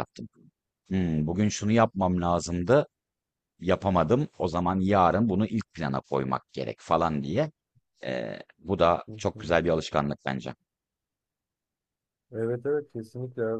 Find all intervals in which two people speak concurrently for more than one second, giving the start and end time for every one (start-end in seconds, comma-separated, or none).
none